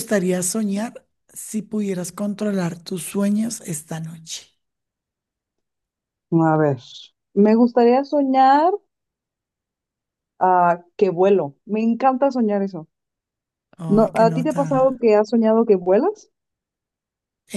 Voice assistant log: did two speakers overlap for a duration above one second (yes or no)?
yes